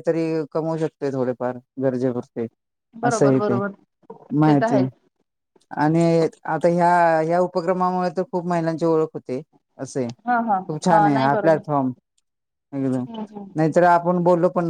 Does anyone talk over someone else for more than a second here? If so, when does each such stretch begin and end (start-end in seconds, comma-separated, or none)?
none